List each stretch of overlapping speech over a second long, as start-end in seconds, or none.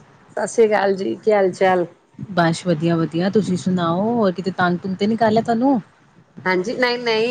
none